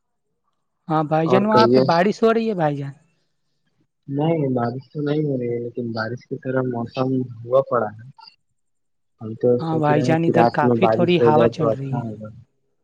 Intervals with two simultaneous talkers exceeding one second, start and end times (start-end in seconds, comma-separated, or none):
9.6-12.0